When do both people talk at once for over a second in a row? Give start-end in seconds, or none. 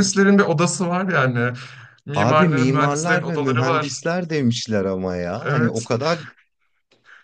2.1-4.0